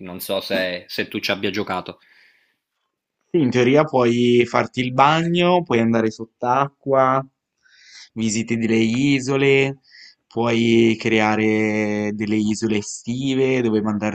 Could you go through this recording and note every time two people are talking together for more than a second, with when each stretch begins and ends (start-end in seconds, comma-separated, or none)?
none